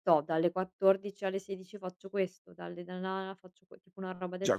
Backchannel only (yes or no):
no